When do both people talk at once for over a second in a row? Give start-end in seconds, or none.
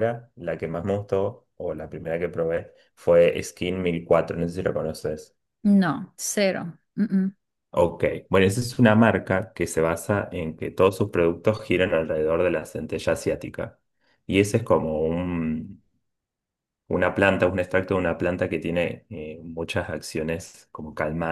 none